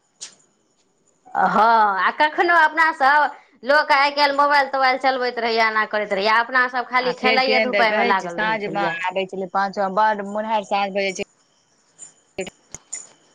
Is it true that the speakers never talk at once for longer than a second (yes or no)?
yes